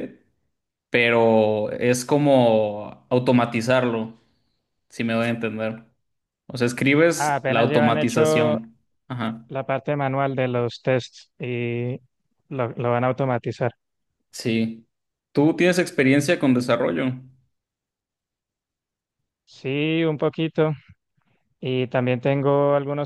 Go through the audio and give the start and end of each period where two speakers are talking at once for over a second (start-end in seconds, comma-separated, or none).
7.2-8.6